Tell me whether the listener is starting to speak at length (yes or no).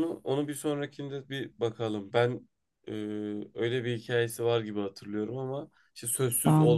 no